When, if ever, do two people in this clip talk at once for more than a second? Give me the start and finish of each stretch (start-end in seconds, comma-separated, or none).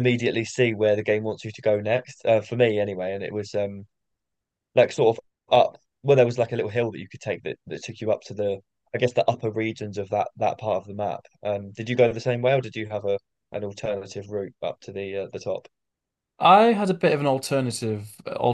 none